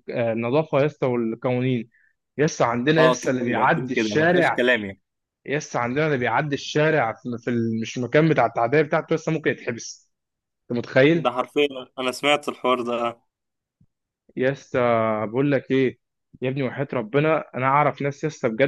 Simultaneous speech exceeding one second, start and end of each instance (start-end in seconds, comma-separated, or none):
3.0-4.7